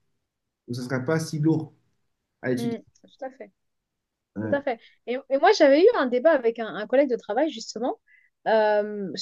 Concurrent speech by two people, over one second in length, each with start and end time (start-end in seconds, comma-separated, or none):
none